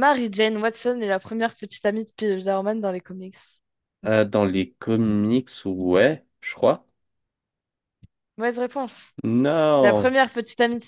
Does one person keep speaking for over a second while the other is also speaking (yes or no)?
no